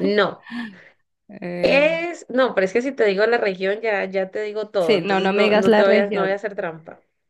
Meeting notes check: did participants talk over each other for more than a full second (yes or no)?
yes